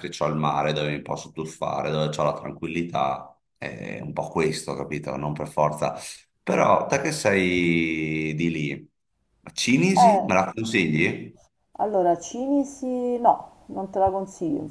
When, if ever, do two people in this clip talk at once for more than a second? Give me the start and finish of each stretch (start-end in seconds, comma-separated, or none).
none